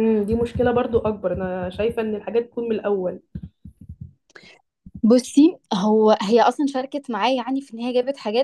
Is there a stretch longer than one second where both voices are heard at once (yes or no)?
no